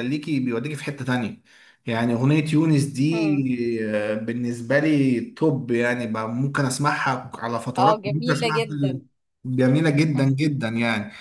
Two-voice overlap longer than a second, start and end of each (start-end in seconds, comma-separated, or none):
7.8-9.0